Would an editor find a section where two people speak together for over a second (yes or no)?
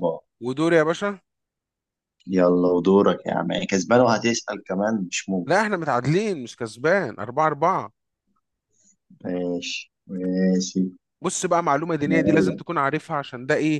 no